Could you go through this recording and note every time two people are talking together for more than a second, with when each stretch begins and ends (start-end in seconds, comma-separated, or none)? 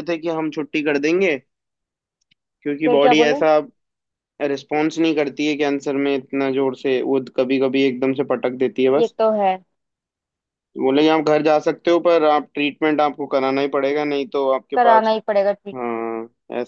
none